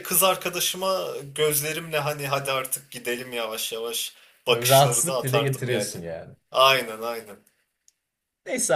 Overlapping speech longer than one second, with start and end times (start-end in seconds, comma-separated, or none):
4.5-5.9